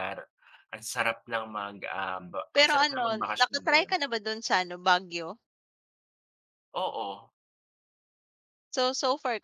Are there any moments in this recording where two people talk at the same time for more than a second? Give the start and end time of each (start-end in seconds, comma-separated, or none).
2.5-3.9